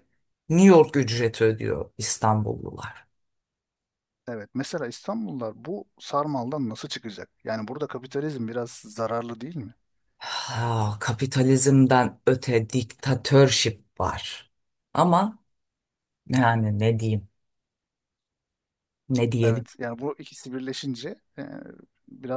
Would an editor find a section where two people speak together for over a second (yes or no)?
no